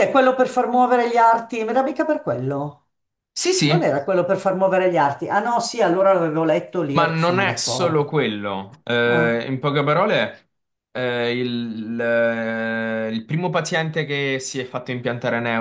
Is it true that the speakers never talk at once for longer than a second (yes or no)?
no